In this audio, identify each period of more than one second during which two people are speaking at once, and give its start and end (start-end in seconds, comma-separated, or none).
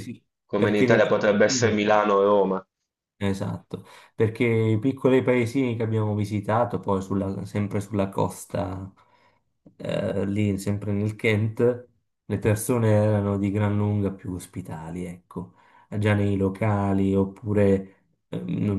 0.6-1.8